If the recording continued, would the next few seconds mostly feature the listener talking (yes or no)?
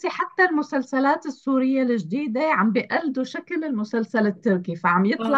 no